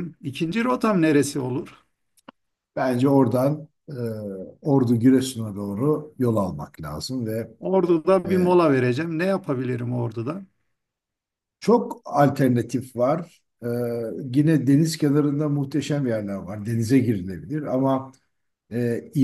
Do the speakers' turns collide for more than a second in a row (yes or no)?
no